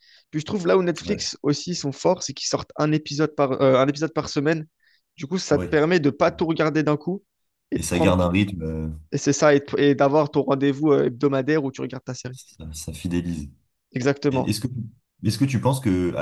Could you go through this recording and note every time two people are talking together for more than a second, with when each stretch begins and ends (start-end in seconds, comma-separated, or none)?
none